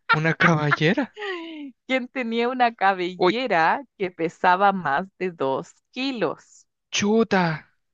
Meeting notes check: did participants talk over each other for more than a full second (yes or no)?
no